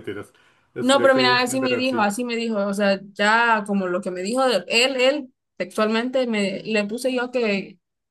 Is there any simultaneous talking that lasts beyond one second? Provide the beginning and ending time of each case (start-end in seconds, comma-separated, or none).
0.8-2.1